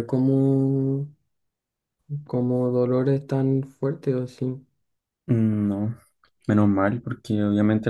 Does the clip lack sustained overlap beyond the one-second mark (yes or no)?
yes